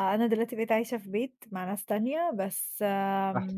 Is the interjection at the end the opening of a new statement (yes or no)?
no